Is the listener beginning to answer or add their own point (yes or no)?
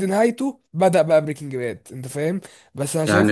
yes